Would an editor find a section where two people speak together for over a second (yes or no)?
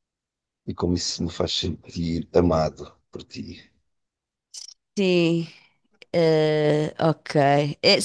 no